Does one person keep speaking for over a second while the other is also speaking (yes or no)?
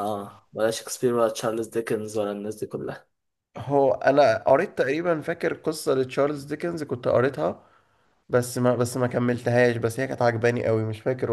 no